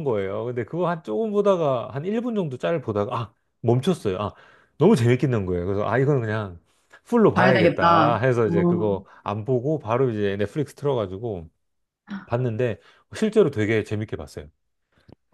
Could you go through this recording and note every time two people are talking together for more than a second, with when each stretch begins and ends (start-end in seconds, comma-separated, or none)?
7.3-9.0